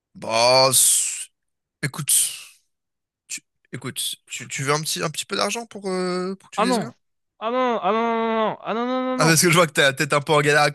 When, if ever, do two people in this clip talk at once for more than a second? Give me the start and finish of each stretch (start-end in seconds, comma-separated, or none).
none